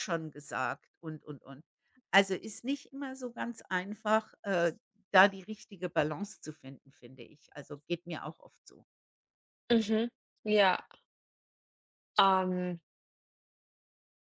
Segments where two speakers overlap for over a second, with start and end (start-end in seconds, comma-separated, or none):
none